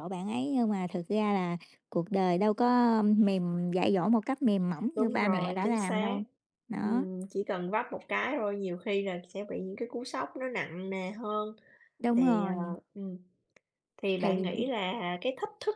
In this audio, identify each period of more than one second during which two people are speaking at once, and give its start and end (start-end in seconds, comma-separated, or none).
4.9-6.2